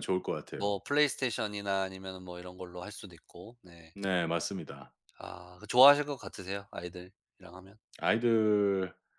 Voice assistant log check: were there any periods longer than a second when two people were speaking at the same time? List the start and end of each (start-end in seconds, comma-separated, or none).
none